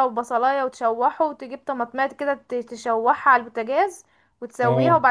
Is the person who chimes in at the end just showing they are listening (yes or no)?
yes